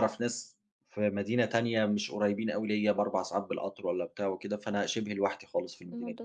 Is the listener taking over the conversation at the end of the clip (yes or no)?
yes